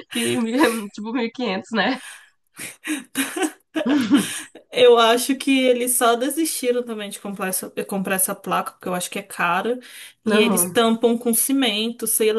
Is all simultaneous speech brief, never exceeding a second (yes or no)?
yes